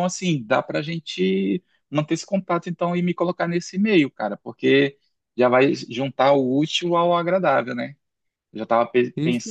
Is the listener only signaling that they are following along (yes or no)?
yes